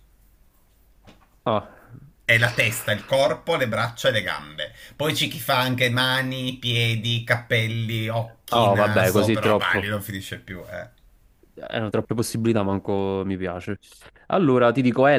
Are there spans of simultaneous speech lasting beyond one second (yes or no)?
yes